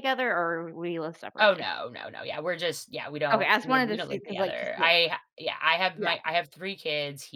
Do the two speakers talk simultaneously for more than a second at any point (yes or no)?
yes